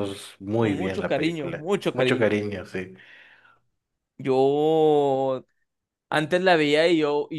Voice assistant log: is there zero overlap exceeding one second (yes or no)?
no